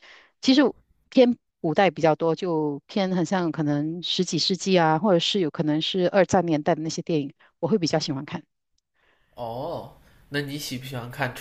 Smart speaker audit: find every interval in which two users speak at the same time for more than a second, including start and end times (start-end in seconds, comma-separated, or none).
none